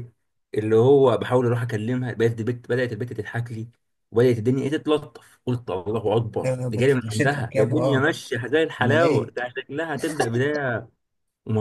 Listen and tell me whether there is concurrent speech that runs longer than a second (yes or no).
yes